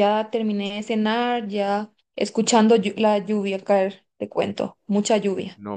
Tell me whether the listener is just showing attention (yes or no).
no